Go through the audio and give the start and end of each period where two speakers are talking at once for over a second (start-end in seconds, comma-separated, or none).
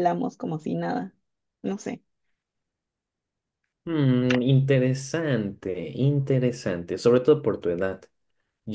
none